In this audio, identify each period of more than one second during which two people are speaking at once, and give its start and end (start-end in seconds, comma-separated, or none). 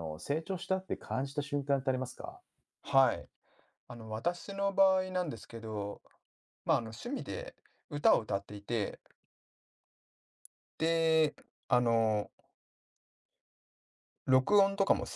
none